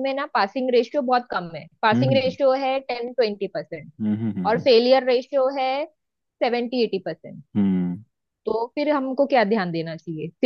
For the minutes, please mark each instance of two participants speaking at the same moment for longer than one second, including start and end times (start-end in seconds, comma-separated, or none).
none